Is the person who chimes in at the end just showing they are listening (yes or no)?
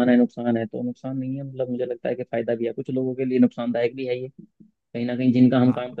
yes